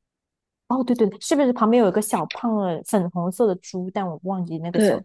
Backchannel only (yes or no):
no